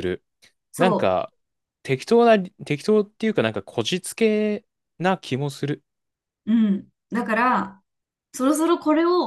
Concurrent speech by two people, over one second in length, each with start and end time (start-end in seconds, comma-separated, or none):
none